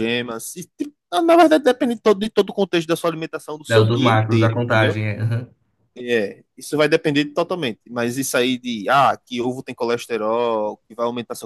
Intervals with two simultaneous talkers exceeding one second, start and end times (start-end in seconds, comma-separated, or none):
3.7-5.0